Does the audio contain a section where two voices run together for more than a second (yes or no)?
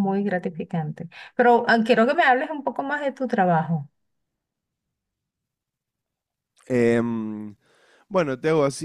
no